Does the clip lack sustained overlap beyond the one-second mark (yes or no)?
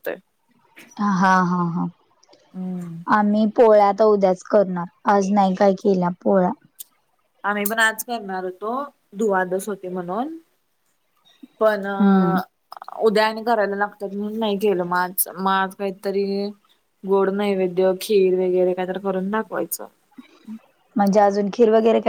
yes